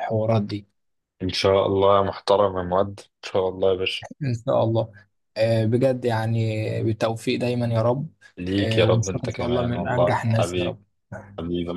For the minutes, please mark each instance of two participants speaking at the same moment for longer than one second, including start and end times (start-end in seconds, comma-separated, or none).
8.6-10.8